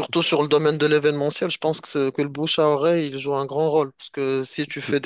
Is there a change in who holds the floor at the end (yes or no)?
no